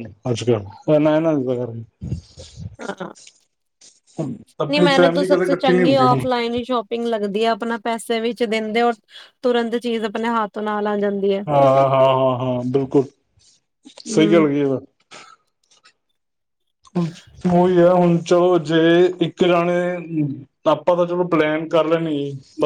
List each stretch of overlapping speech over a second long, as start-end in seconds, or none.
4.7-6.2